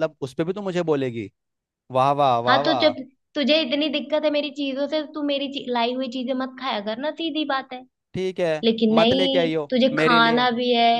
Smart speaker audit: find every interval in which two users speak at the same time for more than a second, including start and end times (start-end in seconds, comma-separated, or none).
8.6-10.4